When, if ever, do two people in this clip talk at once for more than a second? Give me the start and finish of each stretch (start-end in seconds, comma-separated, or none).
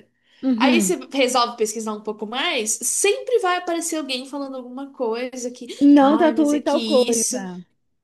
5.8-7.4